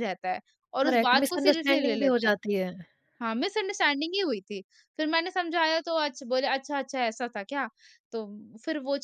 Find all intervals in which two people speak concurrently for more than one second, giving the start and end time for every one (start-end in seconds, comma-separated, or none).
0.8-2.3